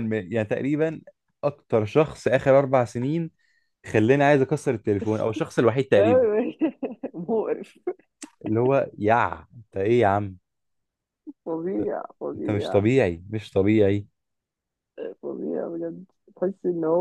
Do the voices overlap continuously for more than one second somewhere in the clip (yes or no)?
no